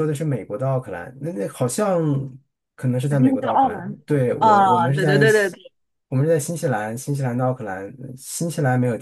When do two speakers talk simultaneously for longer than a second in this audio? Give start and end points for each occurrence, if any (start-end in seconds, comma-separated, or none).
3.1-5.6